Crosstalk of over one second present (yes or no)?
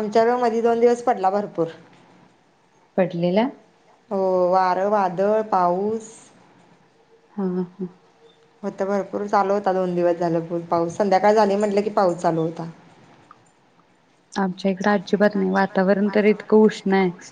yes